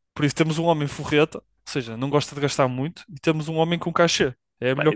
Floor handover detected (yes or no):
yes